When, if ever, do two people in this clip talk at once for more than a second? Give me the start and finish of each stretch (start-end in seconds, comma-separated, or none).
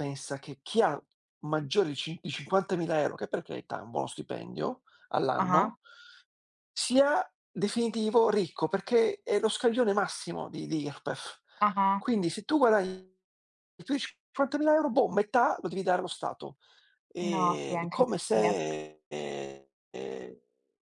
17.2-18.6